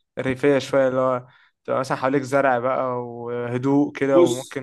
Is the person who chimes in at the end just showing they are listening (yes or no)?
yes